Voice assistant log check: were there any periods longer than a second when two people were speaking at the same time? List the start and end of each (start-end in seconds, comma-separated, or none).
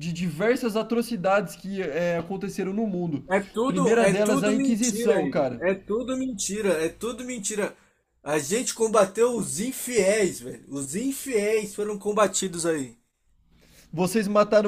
3.6-5.6